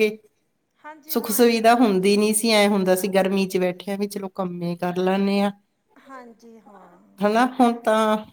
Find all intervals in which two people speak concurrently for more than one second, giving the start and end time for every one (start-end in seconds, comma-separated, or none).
1.1-2.4